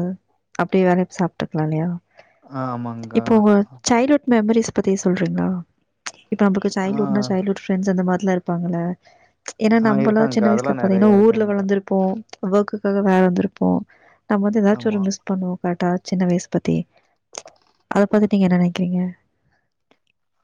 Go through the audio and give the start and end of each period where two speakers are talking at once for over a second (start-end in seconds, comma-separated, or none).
9.8-11.6